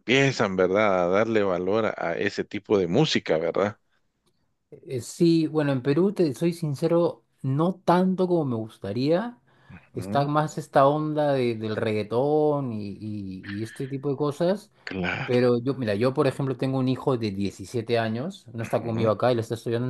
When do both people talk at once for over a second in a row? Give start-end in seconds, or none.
none